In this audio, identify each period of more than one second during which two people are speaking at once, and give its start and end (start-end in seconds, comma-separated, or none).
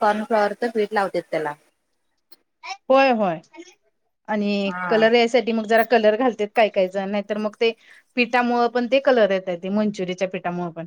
none